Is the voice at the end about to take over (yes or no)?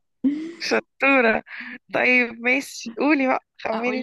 yes